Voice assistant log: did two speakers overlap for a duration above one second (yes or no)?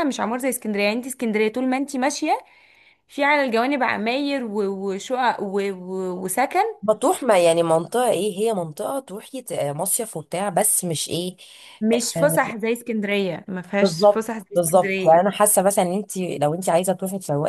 yes